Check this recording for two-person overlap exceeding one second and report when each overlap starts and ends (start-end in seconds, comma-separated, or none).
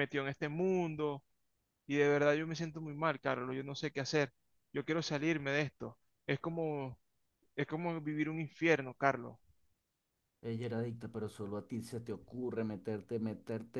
none